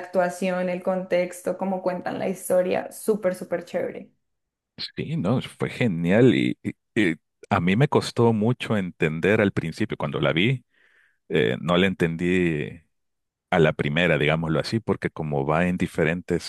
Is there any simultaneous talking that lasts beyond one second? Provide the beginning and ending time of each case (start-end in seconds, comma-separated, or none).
none